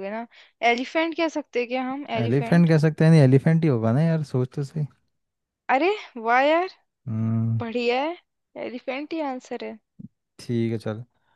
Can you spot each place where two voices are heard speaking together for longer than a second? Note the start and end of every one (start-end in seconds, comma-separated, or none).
none